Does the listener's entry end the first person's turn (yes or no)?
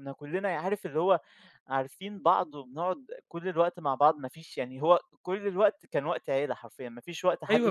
yes